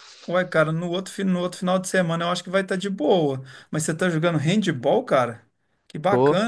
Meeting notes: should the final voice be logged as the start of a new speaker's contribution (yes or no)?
no